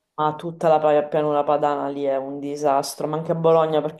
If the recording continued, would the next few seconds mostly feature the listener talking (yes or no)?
no